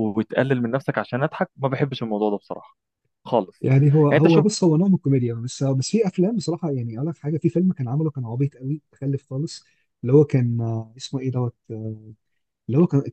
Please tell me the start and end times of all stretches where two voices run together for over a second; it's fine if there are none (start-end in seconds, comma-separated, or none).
none